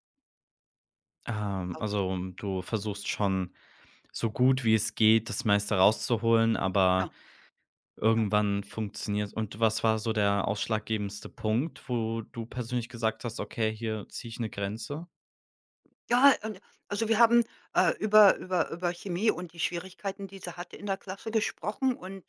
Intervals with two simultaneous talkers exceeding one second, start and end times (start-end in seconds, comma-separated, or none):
none